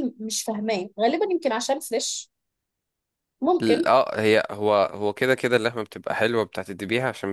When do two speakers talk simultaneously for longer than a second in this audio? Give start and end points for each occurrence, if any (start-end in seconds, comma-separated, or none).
none